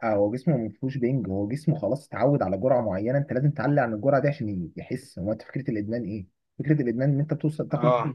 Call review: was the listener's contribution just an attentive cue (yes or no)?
yes